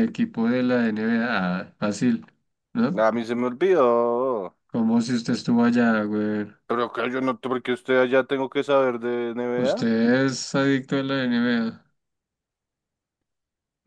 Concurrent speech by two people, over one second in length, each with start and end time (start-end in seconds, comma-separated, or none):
none